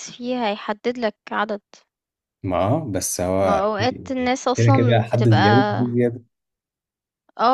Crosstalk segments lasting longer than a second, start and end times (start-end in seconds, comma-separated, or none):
3.4-5.5